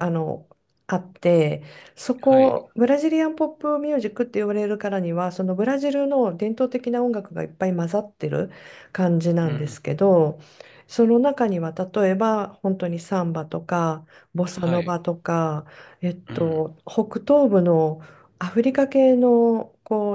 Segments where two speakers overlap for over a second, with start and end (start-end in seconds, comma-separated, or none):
none